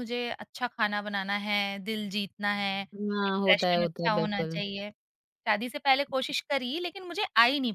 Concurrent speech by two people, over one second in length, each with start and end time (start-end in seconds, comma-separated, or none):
3.3-4.6